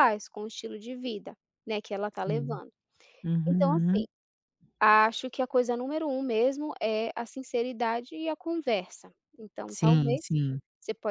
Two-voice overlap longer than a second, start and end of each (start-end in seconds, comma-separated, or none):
none